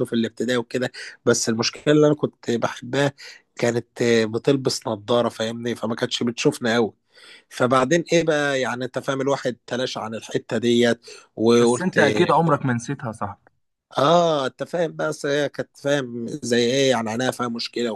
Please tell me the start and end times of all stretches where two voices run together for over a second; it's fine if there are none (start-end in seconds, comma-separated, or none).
none